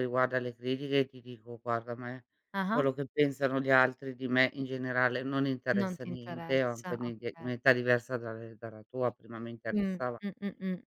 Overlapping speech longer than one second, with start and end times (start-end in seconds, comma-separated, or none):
5.8-7.5